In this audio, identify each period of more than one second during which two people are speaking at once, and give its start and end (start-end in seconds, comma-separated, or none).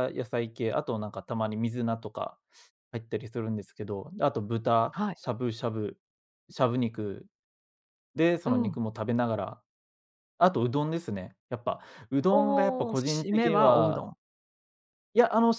12.3-14.1